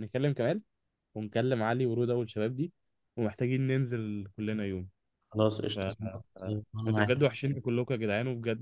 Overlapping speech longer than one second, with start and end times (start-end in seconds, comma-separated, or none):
5.8-7.3